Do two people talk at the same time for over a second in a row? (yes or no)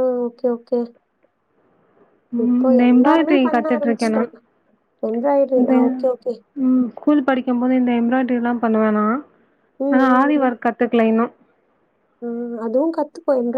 yes